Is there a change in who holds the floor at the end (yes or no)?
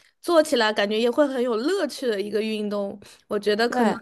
no